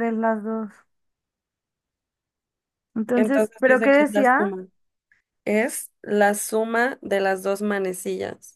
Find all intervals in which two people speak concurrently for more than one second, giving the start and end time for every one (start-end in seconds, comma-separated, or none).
3.1-4.4